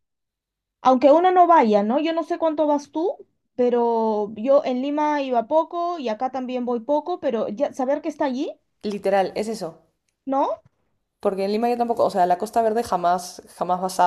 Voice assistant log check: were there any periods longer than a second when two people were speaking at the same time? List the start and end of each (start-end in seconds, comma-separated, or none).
none